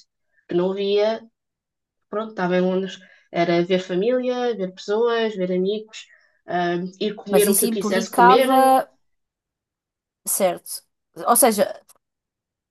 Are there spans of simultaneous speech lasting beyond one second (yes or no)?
yes